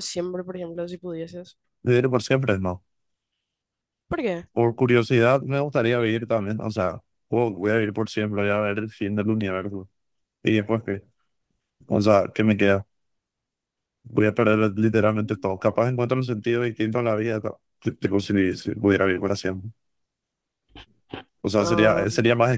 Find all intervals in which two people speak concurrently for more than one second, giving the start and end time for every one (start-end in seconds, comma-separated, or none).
none